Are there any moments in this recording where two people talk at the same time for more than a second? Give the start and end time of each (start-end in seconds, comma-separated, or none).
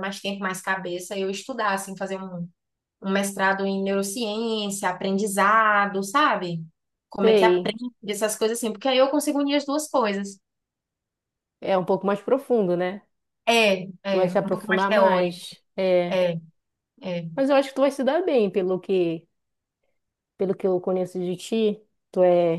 14.1-15.5